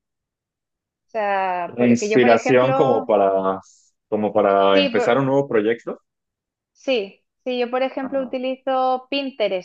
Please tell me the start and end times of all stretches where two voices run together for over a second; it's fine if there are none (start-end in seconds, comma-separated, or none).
1.7-3.1